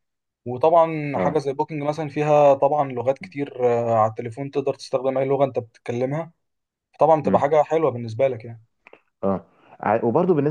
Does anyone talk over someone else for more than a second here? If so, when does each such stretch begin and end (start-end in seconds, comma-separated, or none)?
none